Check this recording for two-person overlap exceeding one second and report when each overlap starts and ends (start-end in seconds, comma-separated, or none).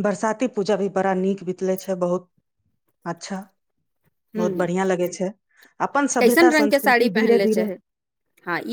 6.2-7.6